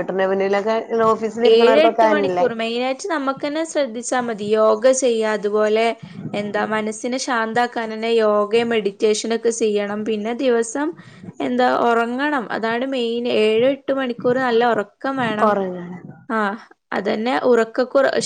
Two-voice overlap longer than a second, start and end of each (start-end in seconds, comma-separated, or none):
none